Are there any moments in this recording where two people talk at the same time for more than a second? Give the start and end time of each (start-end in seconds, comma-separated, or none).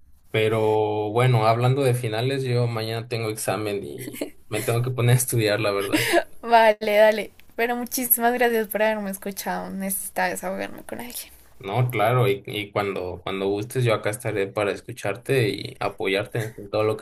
none